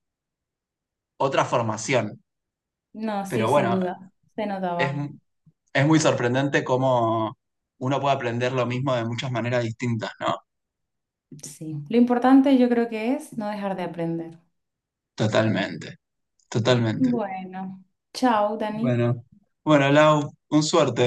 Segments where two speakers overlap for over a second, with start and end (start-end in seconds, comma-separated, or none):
none